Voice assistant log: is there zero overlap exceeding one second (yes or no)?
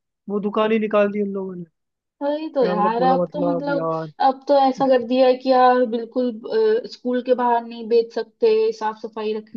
no